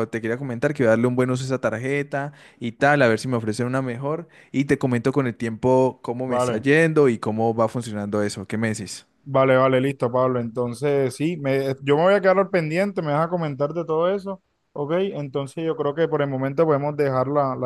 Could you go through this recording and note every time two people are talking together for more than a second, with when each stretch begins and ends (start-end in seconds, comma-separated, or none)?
none